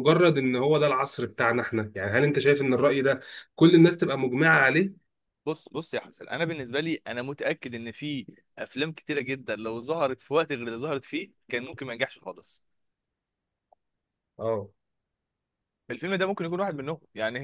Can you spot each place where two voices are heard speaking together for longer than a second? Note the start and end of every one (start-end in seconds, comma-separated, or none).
none